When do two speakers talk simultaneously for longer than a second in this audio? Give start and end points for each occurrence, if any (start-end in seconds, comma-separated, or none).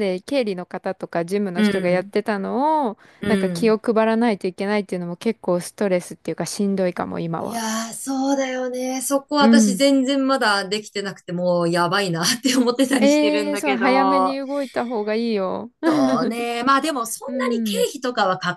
13.0-14.4